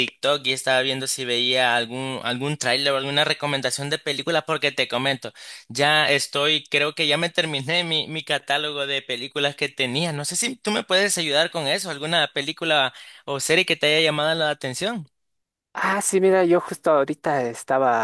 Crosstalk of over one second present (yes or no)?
no